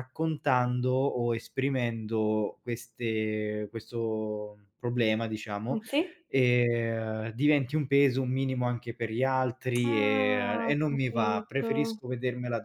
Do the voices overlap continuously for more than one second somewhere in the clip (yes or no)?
yes